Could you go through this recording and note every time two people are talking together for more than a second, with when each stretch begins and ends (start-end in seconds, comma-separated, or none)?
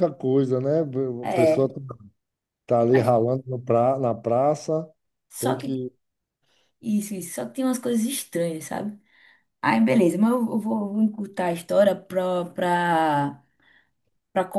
none